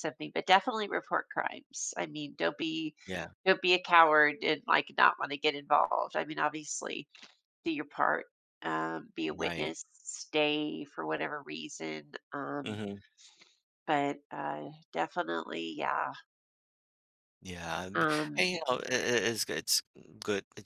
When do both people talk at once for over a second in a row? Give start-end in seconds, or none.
none